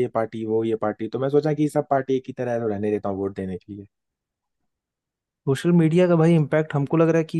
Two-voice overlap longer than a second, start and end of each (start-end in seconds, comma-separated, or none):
none